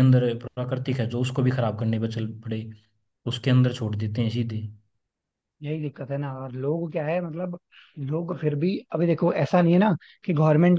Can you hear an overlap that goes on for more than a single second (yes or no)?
no